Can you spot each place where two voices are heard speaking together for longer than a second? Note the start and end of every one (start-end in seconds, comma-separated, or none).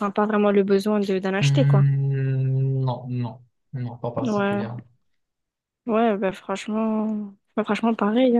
none